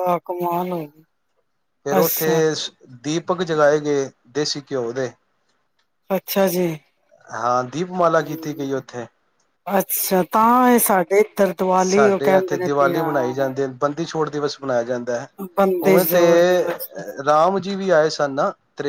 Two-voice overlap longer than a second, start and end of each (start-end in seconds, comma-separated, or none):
11.8-13.5